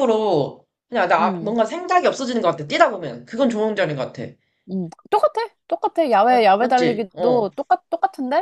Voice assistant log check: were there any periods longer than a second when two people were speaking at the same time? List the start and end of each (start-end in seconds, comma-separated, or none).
6.3-7.5